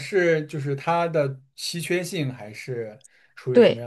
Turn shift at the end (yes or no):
yes